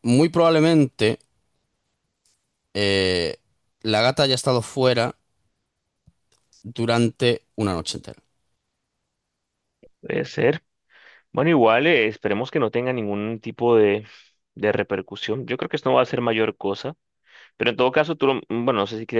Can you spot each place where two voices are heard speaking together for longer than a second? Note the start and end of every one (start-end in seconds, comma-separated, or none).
none